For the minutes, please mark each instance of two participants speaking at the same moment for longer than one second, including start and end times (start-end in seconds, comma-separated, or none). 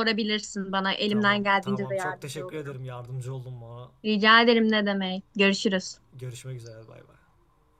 1.1-2.8